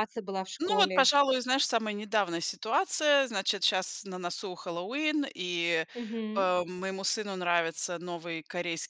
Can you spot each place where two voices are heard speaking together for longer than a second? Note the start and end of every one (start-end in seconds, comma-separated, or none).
none